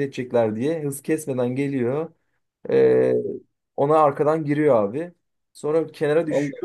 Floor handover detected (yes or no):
no